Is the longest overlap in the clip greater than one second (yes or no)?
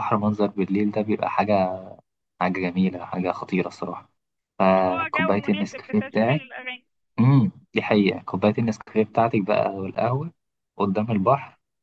yes